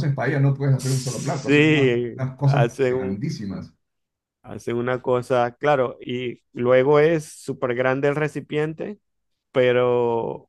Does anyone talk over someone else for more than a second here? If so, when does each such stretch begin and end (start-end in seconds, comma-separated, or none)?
0.8-3.2